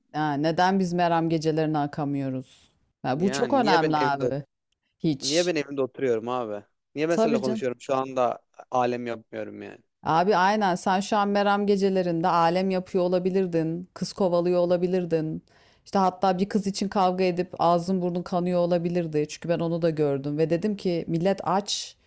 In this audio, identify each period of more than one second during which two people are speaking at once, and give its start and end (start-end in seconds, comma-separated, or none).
3.1-4.3